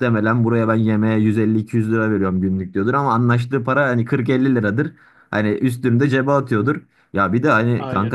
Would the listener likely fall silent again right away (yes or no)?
yes